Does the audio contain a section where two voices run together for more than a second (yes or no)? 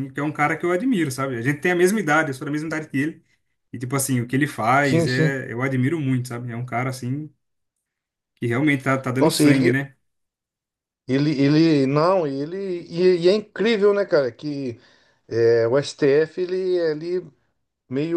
no